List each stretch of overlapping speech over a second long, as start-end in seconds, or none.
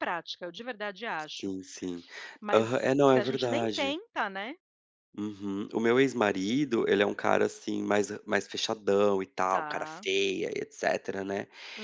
2.5-4.0